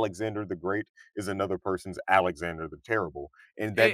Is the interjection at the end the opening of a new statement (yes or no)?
yes